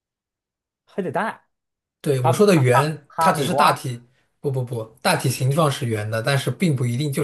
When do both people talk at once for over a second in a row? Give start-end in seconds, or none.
2.2-3.8